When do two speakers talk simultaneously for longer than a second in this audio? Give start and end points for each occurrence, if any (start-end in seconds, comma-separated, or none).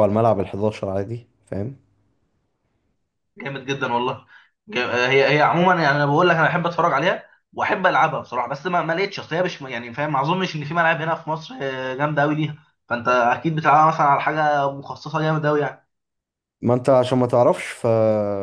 none